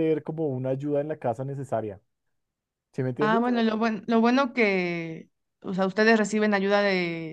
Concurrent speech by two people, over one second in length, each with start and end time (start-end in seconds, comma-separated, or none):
none